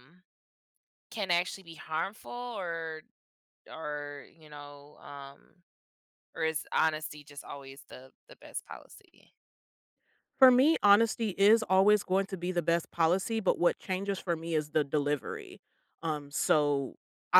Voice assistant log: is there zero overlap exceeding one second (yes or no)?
yes